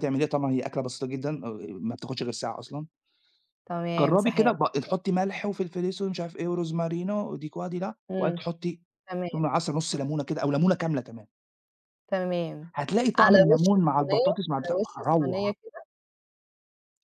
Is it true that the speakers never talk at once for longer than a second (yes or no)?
no